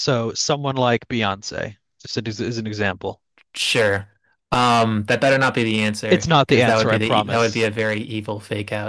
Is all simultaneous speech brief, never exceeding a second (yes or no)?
no